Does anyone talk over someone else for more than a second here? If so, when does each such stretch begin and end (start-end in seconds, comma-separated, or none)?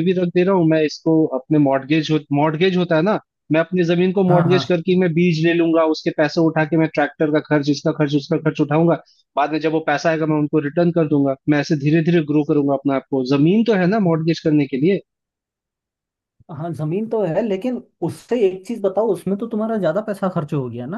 none